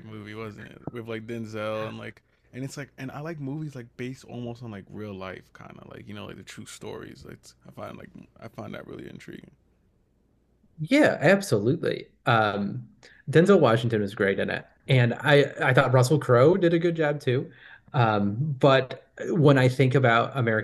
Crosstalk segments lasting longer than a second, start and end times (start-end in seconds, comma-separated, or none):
none